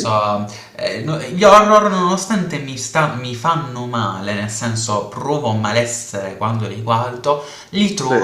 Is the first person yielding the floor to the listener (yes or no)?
no